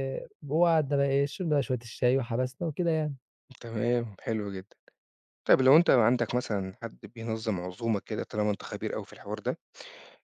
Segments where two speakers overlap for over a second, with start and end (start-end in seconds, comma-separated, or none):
none